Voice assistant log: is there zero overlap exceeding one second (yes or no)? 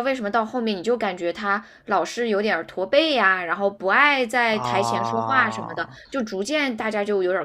no